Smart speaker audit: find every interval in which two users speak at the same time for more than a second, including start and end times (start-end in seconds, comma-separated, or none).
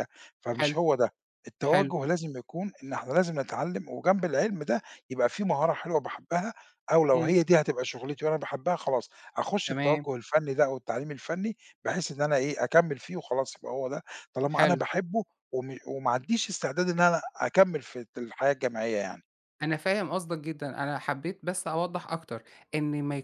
none